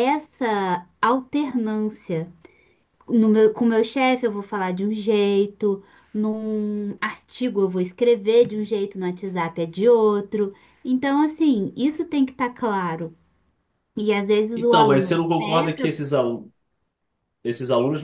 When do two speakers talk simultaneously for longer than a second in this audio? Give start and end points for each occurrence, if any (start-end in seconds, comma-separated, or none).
14.6-15.9